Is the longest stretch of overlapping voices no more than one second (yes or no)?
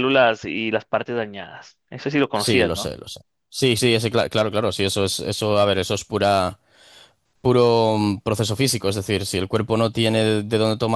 yes